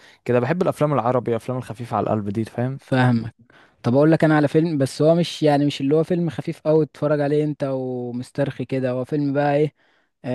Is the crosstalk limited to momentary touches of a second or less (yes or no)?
yes